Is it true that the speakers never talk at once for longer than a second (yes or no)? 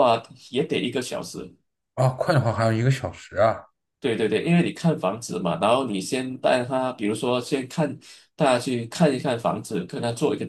yes